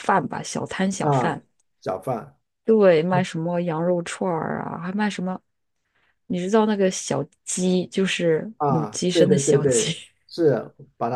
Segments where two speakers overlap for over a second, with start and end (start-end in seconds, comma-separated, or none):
8.6-9.9